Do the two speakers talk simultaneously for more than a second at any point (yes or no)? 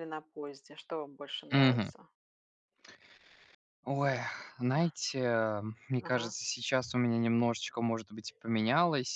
no